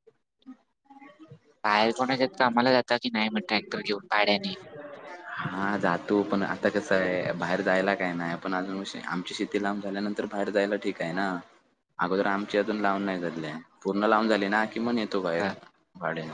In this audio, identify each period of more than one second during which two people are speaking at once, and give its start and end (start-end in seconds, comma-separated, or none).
none